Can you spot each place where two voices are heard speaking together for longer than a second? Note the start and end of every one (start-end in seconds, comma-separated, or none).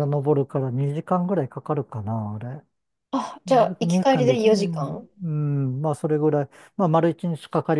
3.5-5.1